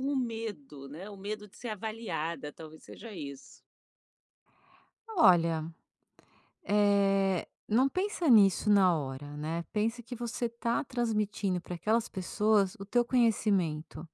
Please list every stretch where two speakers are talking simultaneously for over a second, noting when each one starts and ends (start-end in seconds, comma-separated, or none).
none